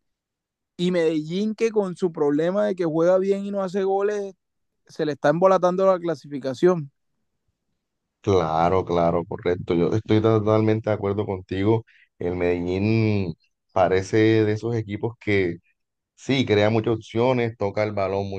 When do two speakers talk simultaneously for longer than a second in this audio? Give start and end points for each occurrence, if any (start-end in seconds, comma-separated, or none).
none